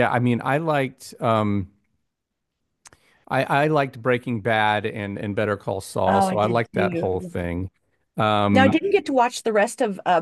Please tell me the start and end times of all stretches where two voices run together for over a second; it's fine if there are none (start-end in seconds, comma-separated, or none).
6.1-7.3